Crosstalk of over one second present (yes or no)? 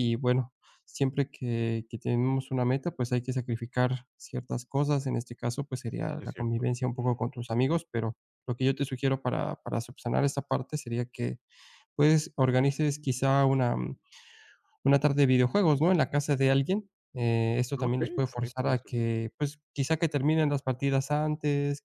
yes